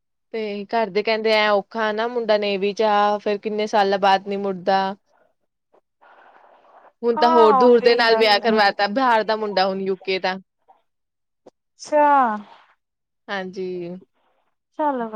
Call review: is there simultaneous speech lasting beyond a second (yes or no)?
yes